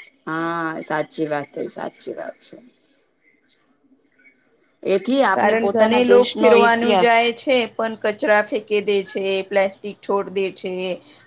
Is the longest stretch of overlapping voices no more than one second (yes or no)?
no